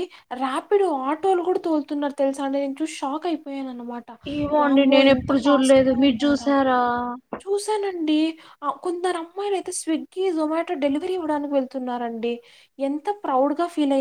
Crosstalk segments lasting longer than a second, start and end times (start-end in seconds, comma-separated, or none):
4.6-6.5